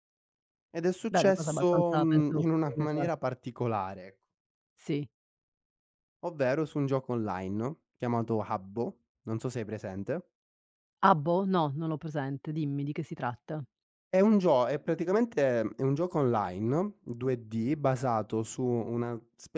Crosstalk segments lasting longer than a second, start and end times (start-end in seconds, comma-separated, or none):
1.1-3.0